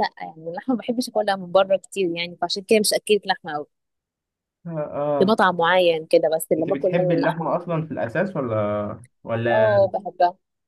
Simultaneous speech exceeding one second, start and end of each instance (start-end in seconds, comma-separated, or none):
6.6-7.9